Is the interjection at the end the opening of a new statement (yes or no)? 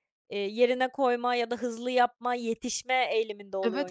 yes